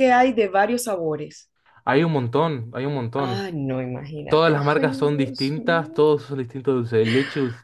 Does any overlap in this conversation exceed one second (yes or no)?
yes